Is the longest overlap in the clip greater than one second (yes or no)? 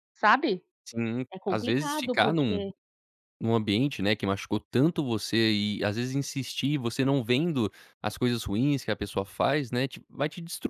yes